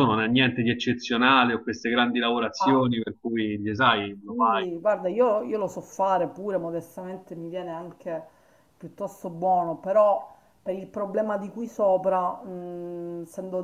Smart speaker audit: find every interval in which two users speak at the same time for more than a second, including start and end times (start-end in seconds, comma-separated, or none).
none